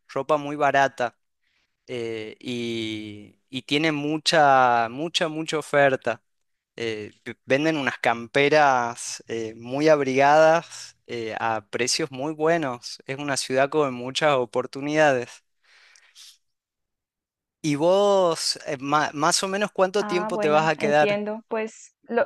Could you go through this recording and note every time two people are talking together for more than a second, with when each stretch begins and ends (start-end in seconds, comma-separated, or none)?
20.0-21.2